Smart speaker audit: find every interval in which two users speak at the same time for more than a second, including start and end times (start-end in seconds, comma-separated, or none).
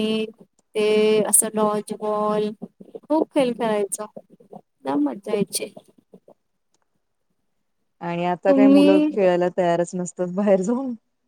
none